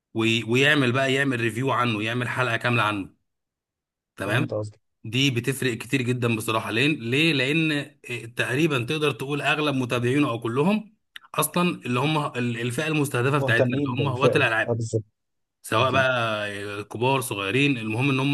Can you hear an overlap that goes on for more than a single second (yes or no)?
yes